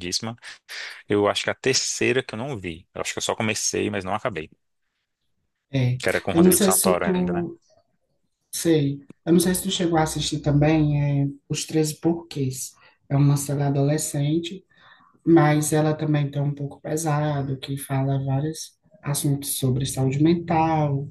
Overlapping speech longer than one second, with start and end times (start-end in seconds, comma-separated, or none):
6.0-7.5